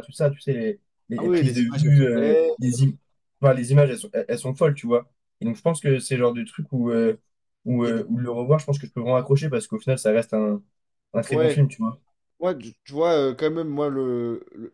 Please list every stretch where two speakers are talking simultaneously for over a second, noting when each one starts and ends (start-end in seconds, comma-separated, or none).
1.2-2.5